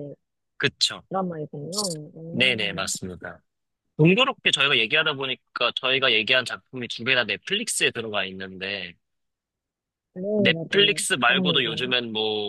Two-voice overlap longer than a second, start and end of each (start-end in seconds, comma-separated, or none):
10.3-11.9